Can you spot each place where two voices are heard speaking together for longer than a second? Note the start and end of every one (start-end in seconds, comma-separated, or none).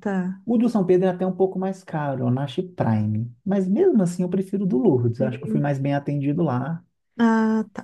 none